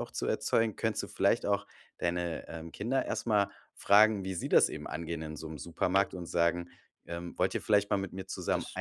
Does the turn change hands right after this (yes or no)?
no